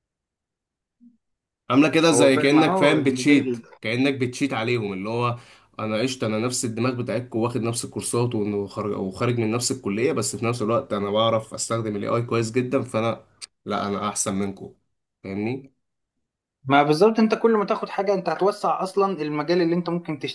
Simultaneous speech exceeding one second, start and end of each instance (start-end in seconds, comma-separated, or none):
2.1-3.6